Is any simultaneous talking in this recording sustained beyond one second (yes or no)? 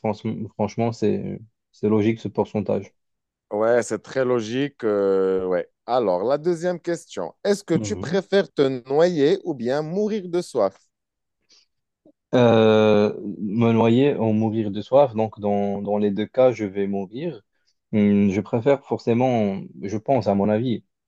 no